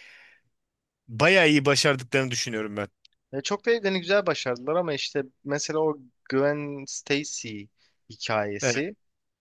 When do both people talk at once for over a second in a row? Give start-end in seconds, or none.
none